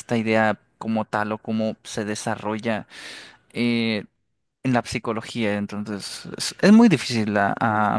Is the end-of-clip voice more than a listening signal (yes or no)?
yes